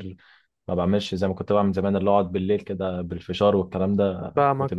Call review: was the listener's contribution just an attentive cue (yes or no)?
no